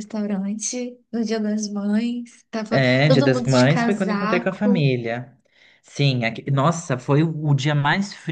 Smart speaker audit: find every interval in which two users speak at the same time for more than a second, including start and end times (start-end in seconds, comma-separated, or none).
2.7-4.9